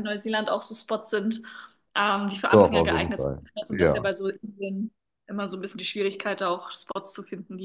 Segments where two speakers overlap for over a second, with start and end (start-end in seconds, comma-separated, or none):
2.5-4.1